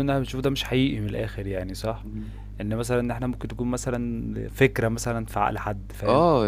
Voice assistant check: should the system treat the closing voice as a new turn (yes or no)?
yes